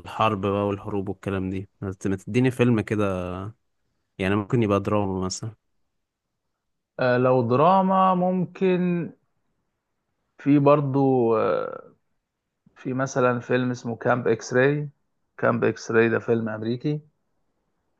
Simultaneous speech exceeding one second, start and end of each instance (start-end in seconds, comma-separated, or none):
none